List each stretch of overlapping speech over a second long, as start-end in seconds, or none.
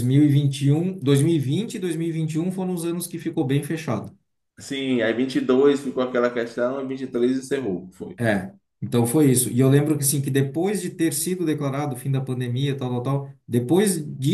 none